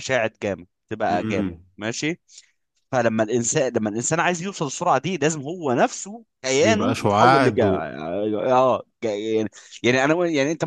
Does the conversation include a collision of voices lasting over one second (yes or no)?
yes